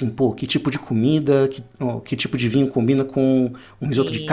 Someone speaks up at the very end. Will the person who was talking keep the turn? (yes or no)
yes